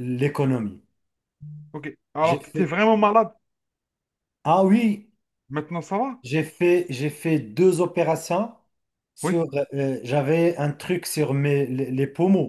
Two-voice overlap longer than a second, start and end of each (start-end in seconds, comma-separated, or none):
none